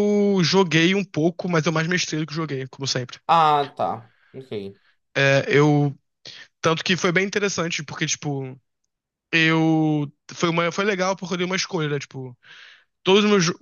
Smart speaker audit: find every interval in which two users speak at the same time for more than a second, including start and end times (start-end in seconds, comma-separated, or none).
none